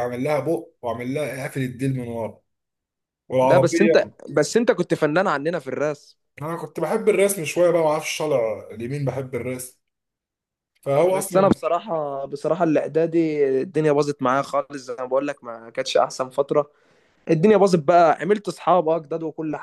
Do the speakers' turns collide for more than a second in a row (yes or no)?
no